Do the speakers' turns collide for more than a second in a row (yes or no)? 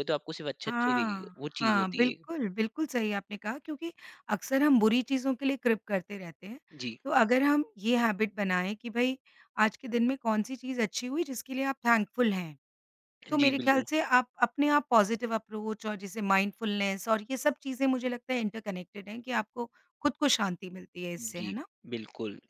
yes